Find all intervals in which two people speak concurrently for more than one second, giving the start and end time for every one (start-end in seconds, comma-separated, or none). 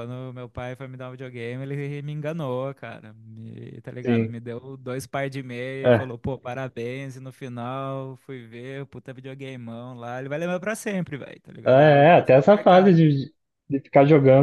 11.7-13.0